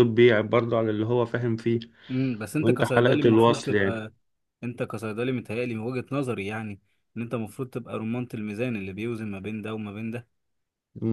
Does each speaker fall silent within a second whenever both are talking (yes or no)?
no